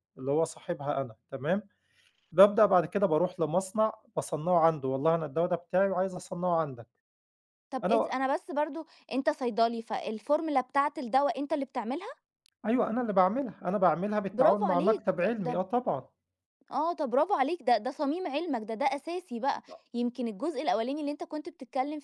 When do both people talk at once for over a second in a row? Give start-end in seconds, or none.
14.3-15.6